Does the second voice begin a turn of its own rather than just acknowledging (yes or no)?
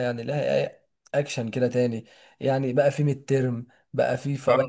no